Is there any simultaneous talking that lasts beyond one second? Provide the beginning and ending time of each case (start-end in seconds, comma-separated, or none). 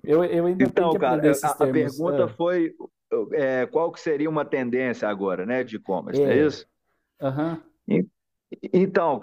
0.6-2.4